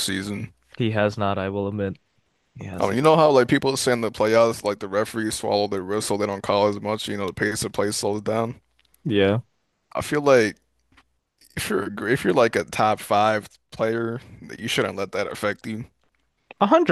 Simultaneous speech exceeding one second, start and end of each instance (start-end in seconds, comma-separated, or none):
none